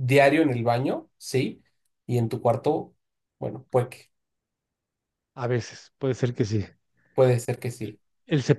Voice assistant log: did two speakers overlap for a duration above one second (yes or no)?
no